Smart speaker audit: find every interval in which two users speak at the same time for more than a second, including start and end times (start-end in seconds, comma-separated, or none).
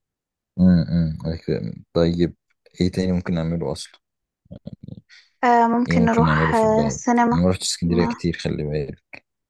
5.9-7.4